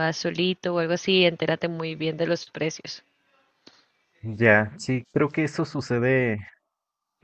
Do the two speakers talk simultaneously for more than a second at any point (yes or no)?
no